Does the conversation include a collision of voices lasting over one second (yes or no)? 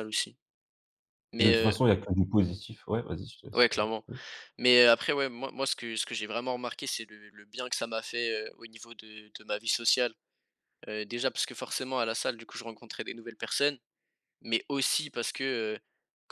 no